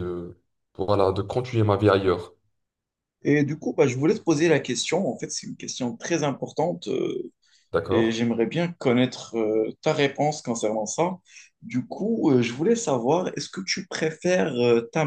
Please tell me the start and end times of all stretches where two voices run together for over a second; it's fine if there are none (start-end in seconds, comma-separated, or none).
none